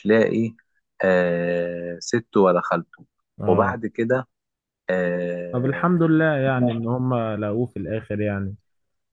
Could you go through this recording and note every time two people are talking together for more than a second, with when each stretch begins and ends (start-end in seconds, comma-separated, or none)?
none